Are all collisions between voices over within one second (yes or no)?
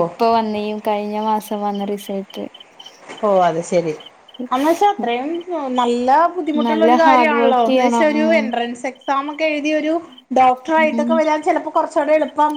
no